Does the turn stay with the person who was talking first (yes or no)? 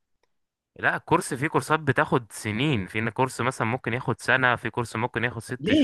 no